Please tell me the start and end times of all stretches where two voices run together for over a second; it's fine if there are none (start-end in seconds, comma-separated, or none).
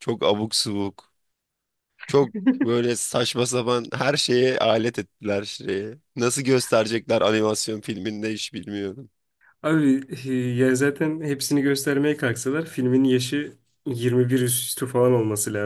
none